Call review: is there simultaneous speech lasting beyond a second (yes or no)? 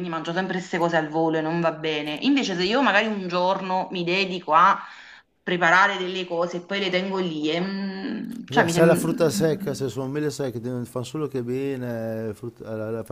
yes